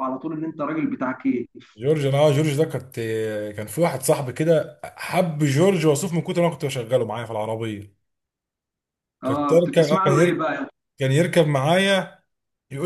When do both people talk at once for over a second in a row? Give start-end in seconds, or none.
9.2-10.5